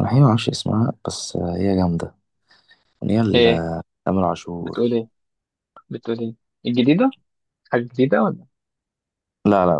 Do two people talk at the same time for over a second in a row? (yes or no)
no